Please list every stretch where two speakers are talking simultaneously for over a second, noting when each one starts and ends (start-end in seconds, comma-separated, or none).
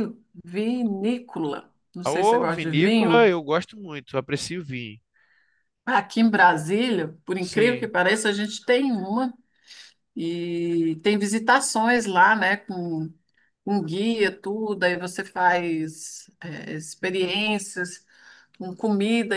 2.0-3.3